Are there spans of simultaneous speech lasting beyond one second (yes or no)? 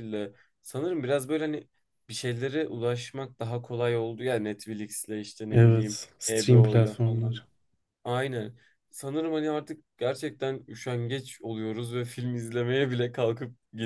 yes